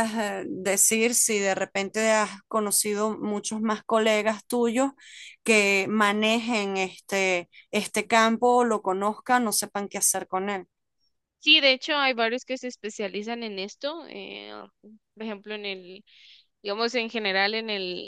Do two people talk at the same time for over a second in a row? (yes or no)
no